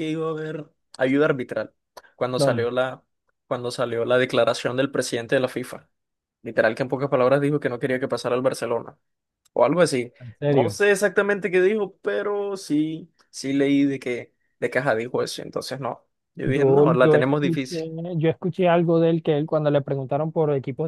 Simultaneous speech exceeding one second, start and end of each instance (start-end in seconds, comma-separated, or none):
16.5-17.8